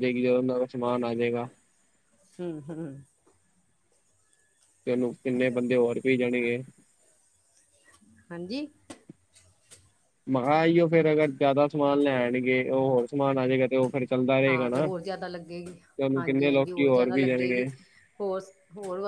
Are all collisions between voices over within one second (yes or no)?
no